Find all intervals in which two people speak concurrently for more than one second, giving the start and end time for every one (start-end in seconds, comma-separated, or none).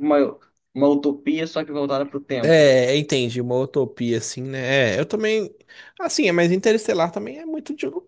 none